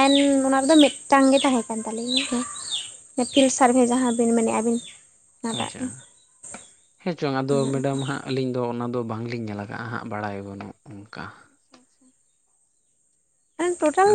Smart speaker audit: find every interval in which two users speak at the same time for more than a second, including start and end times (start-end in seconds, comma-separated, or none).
none